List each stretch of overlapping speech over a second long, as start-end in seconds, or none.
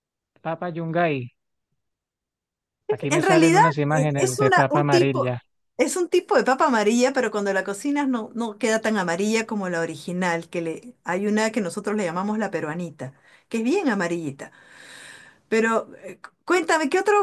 3.1-5.3